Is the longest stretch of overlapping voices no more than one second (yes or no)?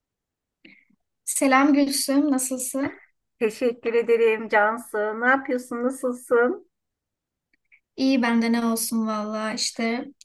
yes